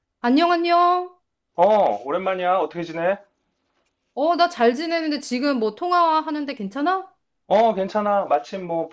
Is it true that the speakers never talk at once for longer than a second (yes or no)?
yes